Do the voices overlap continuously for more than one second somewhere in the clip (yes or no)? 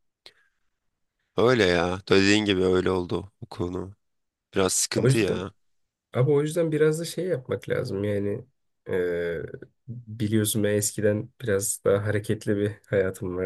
no